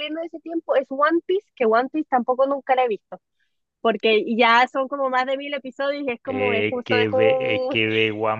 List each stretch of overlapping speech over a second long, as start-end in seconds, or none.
6.2-7.8